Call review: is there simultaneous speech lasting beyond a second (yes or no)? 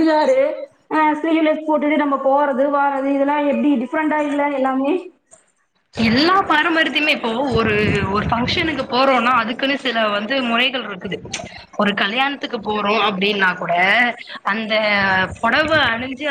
no